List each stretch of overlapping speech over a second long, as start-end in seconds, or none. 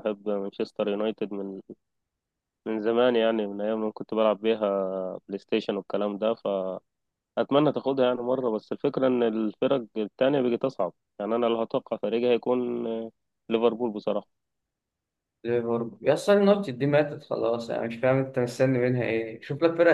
none